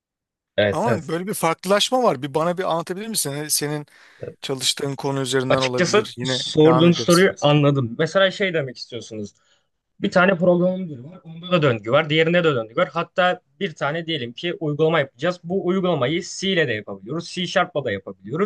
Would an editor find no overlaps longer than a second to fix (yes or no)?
no